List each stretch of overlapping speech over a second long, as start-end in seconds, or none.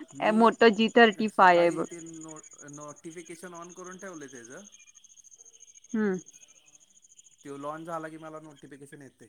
none